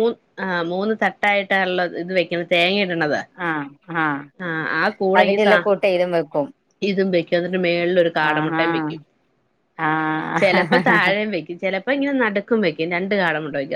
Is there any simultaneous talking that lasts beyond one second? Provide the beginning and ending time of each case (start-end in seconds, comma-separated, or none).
none